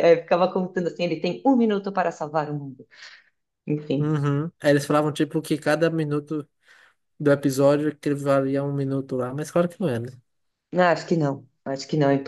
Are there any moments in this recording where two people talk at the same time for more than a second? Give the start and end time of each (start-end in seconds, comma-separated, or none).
none